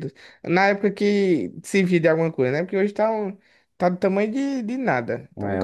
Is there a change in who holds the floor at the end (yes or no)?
yes